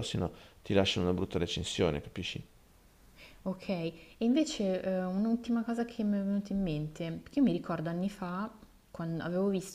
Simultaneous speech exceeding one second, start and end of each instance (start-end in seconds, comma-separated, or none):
none